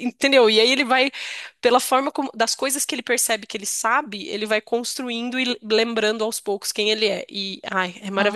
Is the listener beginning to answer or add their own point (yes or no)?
no